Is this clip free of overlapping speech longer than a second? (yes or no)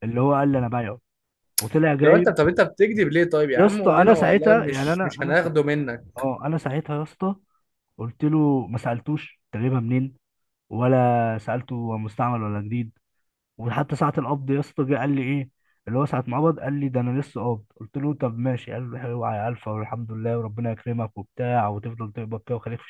no